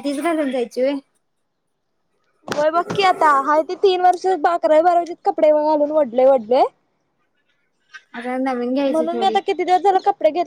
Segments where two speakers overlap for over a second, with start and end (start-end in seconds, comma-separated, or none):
none